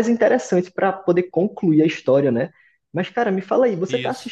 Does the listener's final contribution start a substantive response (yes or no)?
no